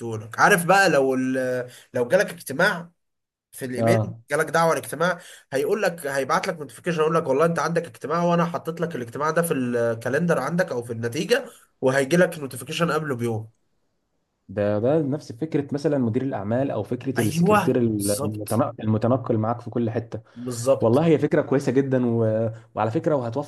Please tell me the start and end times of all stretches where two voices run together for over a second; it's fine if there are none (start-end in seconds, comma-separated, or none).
17.2-18.6